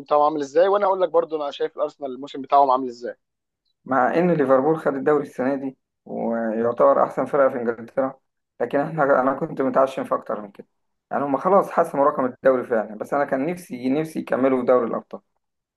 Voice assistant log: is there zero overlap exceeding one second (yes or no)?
yes